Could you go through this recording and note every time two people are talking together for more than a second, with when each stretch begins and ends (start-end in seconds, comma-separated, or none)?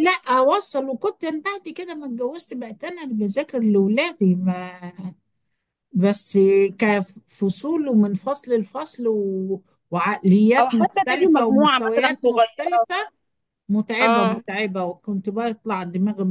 10.6-12.9